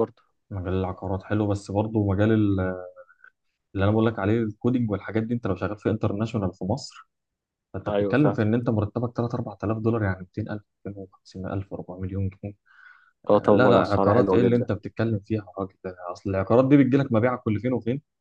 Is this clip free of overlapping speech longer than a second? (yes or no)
no